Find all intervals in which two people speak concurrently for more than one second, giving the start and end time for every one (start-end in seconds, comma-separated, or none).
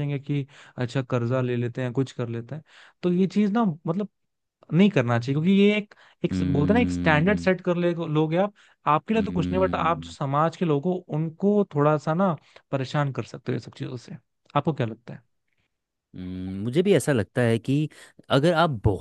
6.3-7.5